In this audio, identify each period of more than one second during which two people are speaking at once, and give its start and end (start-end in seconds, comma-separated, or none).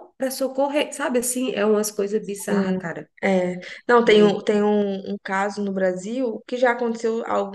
none